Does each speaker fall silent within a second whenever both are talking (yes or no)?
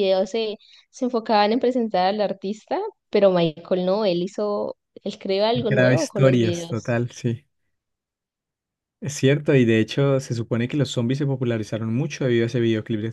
no